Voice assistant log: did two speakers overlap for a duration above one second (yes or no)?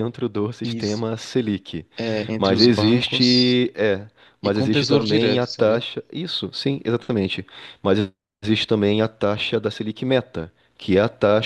yes